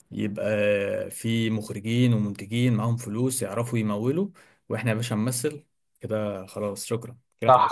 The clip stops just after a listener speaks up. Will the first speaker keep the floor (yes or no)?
no